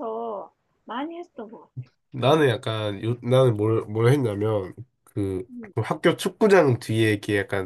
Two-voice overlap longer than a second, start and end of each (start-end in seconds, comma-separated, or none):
none